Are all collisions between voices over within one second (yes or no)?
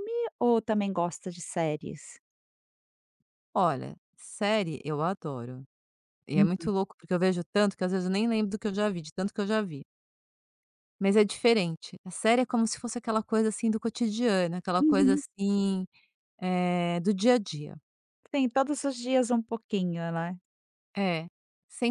yes